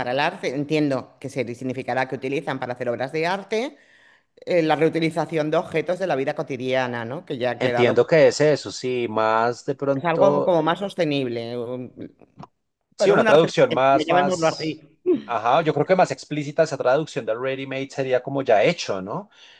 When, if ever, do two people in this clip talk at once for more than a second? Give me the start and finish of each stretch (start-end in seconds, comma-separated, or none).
13.0-14.8